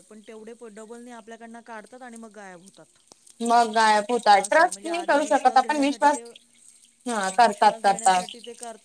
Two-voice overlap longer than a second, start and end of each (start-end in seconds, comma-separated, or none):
none